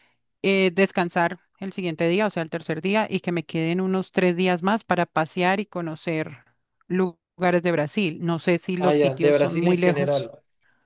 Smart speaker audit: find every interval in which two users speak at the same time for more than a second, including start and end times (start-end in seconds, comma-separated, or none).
8.8-10.3